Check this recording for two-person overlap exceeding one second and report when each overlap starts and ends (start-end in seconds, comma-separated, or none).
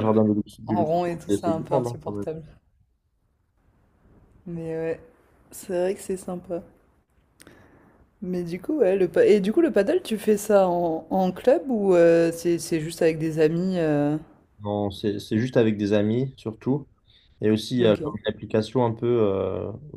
0.7-2.2